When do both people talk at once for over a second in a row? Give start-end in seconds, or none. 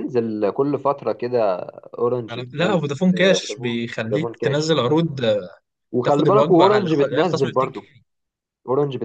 2.3-4.8, 6.0-7.9